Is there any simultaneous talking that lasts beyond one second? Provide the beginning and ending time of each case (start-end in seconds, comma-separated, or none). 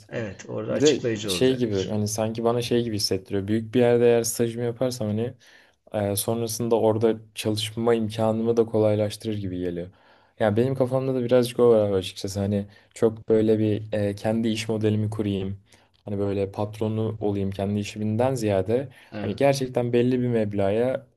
0.7-2.0